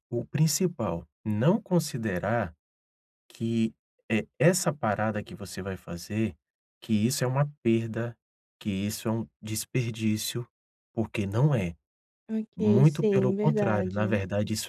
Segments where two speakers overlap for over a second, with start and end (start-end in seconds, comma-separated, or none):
12.6-14.2